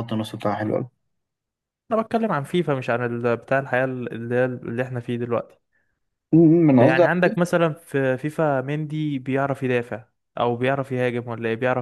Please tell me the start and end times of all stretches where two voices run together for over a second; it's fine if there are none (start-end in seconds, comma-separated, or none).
none